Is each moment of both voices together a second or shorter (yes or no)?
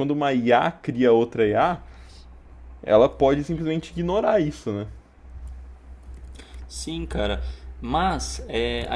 yes